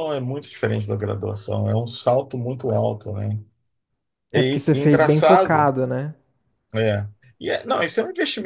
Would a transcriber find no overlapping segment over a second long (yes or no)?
no